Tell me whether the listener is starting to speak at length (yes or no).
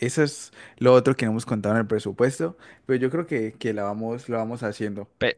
yes